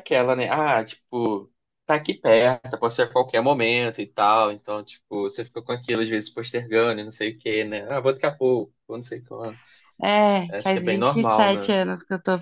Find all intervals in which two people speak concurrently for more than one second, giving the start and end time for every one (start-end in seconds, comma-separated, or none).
10.5-11.8